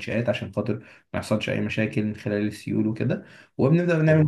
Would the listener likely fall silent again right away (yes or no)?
yes